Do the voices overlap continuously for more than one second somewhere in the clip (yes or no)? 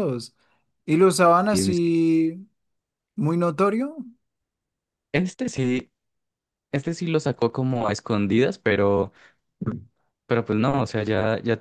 no